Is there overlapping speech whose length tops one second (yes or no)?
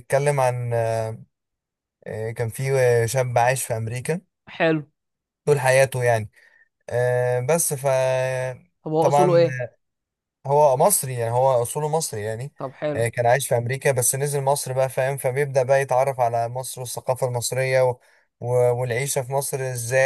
no